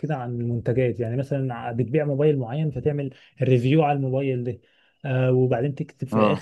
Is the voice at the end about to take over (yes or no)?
no